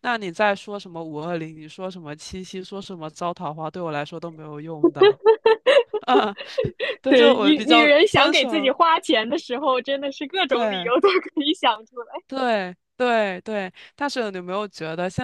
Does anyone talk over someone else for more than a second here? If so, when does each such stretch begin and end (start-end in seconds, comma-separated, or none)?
7.1-8.7